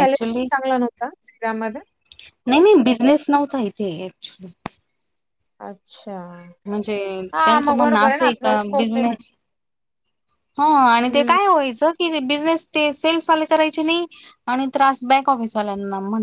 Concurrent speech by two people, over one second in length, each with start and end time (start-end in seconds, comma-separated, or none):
7.5-9.2